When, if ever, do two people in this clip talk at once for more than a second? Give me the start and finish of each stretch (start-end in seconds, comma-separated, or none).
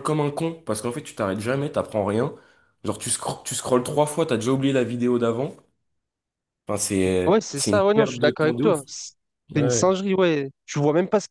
7.3-8.8